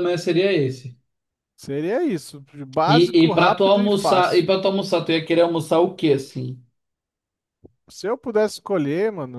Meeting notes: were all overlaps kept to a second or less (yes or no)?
no